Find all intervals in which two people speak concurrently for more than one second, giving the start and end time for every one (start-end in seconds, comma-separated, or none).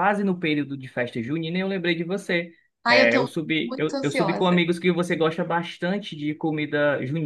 2.8-4.7